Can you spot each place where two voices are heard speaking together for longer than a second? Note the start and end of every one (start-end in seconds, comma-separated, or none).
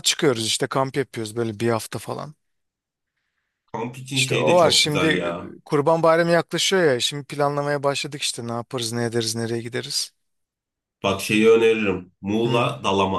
4.1-5.5